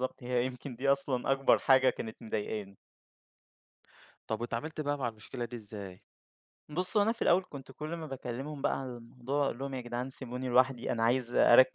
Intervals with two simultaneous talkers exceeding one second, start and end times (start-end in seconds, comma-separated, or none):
none